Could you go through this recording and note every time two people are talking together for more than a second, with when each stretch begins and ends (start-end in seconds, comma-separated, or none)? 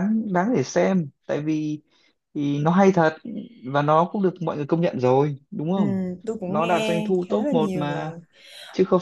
6.5-8.1